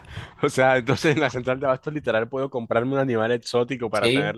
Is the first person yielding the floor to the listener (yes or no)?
yes